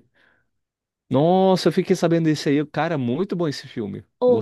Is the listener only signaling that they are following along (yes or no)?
no